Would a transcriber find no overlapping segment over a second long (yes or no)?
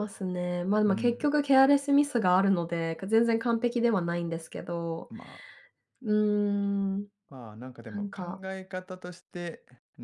yes